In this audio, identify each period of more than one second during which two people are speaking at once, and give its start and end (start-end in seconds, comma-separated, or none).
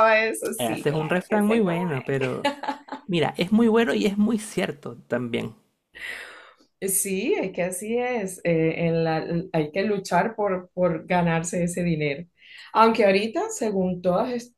0.6-1.9